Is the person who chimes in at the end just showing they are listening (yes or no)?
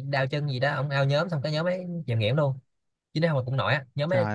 yes